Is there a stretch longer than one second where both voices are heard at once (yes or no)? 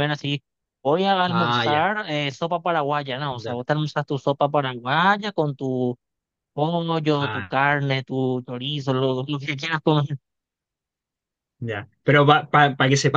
no